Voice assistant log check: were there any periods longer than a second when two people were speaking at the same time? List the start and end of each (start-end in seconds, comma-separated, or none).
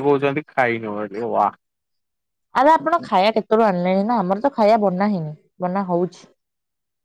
none